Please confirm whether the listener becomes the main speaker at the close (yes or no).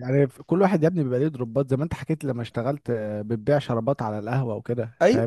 yes